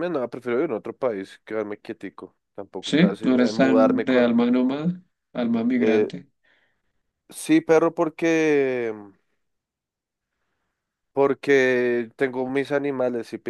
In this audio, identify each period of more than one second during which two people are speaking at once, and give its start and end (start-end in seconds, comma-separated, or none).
2.9-4.4